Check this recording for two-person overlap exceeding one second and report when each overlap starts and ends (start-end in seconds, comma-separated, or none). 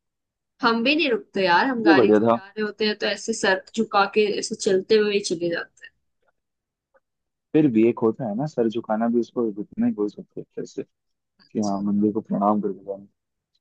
none